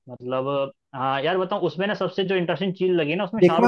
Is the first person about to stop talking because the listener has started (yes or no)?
yes